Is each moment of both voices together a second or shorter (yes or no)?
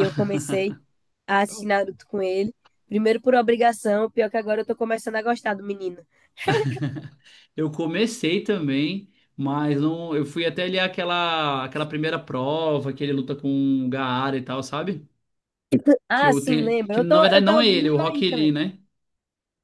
no